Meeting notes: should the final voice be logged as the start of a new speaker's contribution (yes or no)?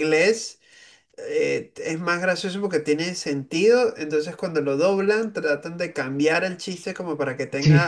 no